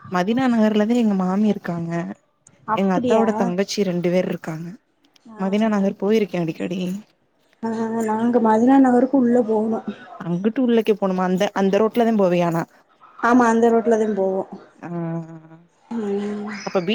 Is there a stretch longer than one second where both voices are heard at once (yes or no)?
no